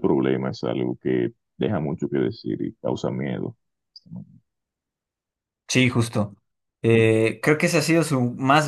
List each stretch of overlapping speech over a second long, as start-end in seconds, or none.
none